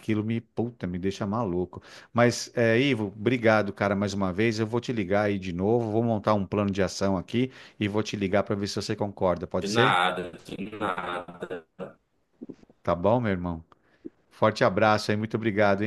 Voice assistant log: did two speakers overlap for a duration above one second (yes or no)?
no